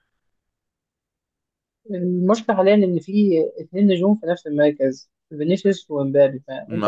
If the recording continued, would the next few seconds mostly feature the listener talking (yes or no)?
no